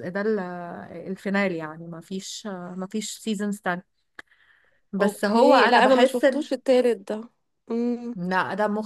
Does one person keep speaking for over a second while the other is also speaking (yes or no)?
yes